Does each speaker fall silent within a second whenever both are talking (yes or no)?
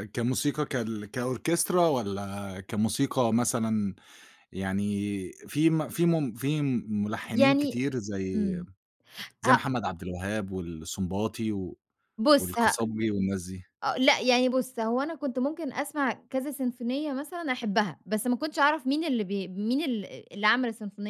yes